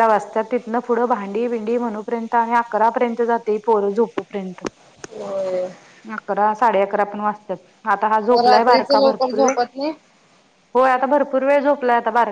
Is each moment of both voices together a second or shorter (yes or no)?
no